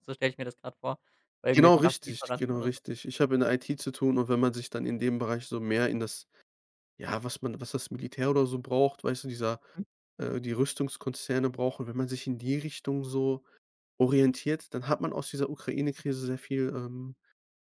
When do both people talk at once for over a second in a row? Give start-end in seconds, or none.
1.5-2.8